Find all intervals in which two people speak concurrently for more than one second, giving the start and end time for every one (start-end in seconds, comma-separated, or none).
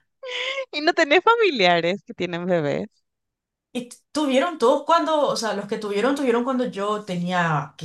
none